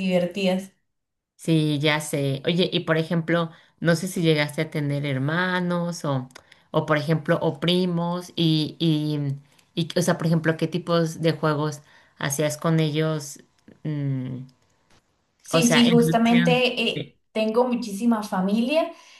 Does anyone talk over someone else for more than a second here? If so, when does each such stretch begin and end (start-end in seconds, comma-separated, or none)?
15.5-17.2